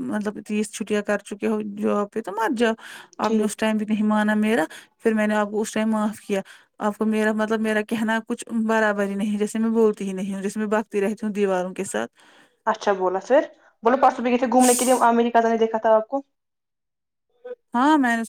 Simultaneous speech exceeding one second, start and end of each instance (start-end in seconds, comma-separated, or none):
none